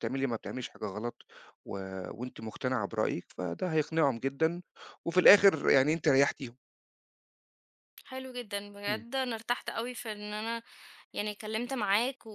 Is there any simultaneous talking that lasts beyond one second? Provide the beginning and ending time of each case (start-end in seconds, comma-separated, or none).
none